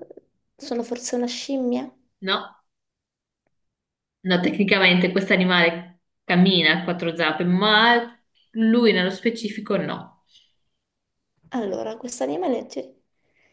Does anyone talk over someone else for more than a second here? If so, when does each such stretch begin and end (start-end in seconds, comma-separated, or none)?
none